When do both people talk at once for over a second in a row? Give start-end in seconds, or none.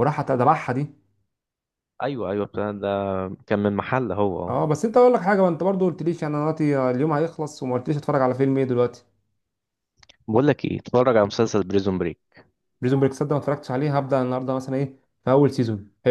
none